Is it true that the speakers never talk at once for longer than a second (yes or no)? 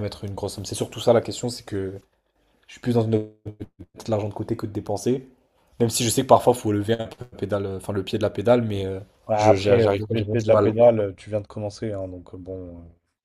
no